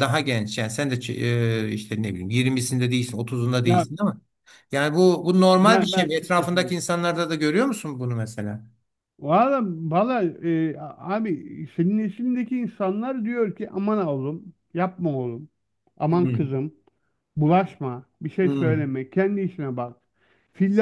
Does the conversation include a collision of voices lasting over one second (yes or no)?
yes